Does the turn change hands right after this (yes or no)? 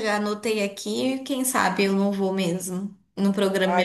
yes